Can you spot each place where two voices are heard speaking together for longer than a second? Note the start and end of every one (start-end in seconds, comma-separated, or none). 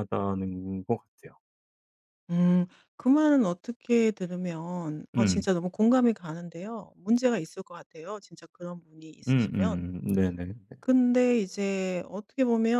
none